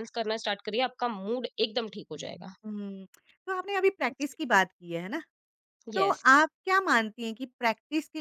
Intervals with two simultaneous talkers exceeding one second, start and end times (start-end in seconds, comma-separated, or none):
none